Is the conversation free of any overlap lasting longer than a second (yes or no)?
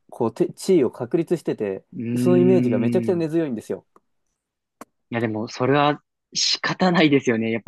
no